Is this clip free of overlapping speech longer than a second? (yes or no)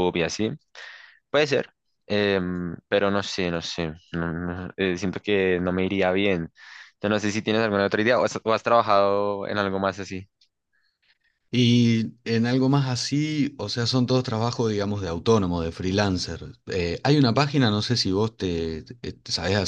yes